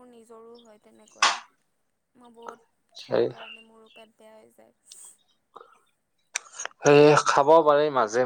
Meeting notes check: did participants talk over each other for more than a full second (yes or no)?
no